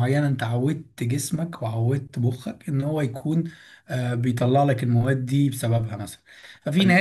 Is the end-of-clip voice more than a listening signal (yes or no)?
no